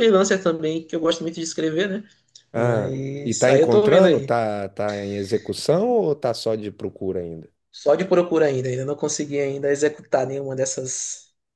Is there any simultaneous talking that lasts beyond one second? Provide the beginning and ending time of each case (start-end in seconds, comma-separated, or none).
2.5-4.3